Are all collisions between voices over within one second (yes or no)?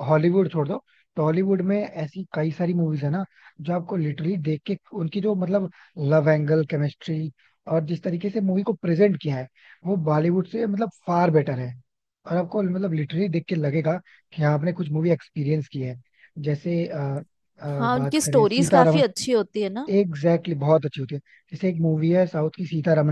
no